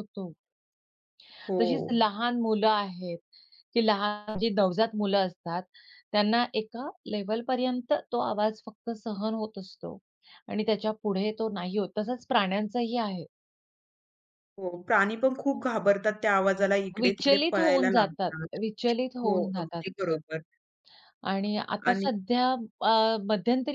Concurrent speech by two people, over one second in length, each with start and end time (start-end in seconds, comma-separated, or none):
17.0-18.6